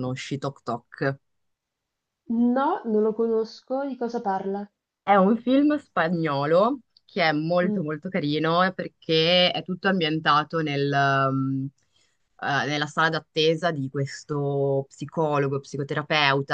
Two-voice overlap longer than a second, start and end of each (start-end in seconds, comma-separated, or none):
none